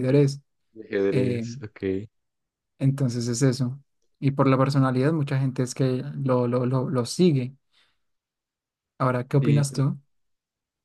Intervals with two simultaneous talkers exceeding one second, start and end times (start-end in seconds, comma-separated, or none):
none